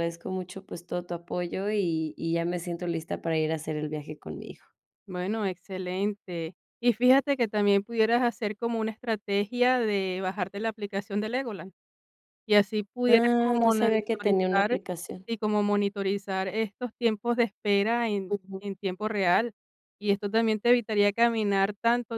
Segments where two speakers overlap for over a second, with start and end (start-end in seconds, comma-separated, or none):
13.1-14.8